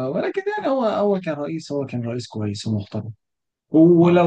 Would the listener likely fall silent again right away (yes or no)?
yes